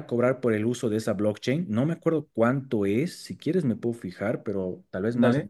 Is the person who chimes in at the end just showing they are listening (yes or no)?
yes